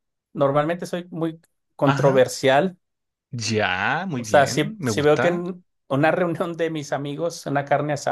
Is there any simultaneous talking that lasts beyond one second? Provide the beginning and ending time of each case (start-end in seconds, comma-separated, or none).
4.2-5.4